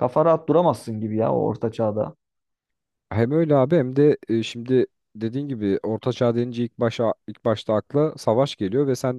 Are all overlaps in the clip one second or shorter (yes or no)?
yes